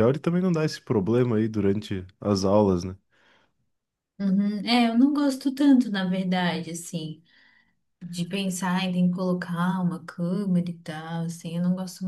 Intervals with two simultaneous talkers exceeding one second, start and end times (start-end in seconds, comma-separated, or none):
none